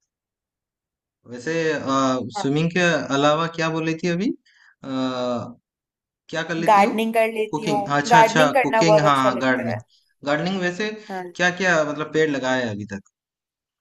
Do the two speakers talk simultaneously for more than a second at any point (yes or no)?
yes